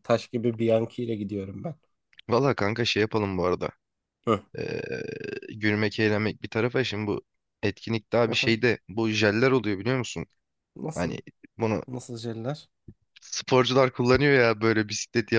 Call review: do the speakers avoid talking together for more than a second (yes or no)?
yes